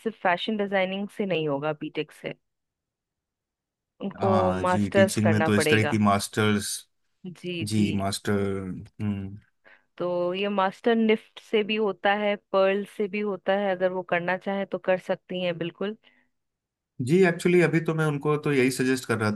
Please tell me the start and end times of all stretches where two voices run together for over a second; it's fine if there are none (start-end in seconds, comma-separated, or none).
4.2-6.0